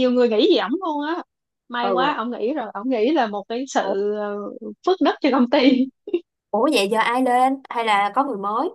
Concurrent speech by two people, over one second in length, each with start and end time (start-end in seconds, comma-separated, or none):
none